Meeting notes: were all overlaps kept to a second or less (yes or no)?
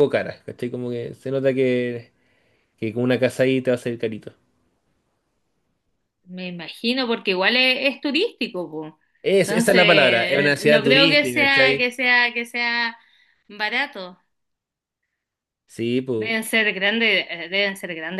no